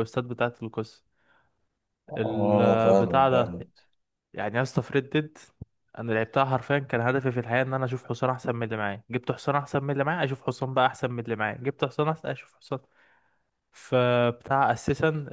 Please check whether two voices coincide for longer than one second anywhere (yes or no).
yes